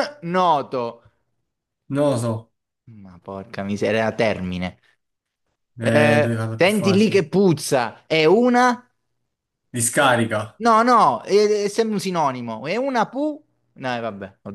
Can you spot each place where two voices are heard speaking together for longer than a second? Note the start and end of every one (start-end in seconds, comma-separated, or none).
5.8-7.3